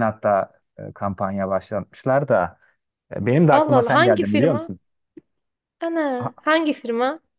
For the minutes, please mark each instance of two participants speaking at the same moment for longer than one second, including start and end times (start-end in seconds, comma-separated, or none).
3.5-4.7